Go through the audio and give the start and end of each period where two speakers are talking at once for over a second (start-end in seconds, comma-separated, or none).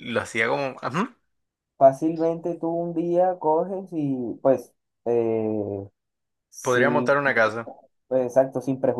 none